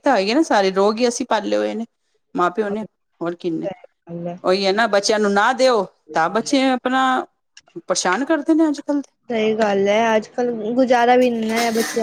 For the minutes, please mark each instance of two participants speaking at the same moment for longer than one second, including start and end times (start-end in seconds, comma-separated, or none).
none